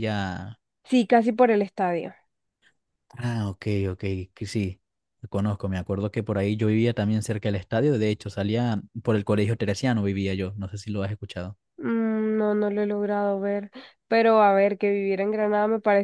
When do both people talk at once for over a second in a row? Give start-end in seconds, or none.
none